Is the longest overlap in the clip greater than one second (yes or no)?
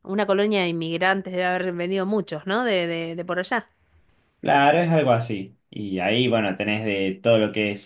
no